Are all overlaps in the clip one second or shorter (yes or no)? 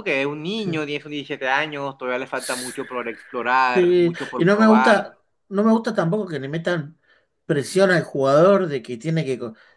no